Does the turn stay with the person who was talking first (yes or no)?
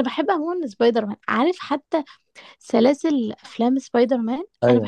no